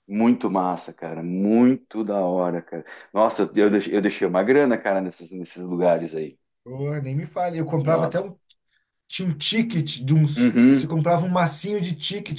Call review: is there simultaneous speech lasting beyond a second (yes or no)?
no